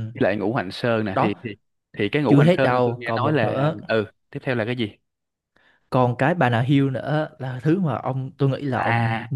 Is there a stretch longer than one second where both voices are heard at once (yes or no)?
yes